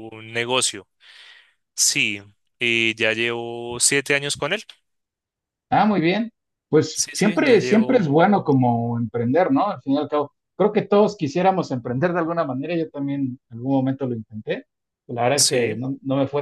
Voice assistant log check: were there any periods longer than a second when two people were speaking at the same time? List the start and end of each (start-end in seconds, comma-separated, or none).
6.9-8.2